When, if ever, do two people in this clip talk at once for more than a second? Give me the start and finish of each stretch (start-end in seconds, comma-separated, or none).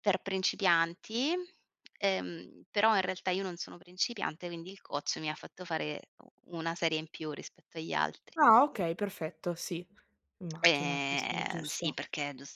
10.6-11.9